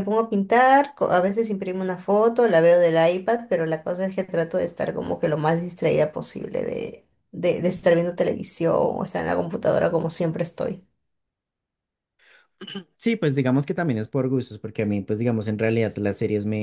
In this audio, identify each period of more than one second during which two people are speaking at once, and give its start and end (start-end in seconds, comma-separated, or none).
none